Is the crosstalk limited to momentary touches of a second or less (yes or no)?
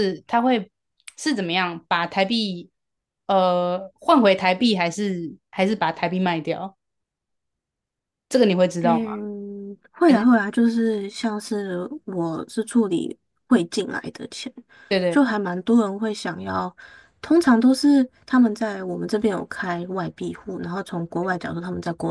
yes